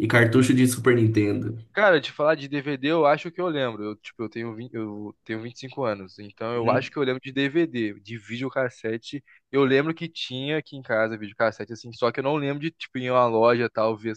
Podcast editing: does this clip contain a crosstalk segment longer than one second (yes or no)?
no